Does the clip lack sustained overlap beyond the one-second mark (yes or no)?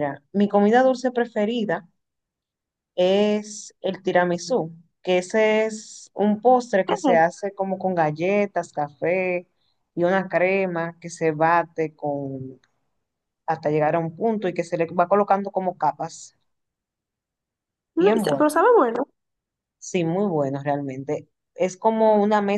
yes